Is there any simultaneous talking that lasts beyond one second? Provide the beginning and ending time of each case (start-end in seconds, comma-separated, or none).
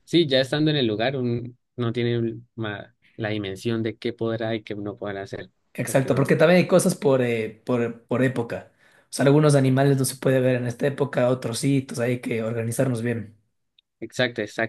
none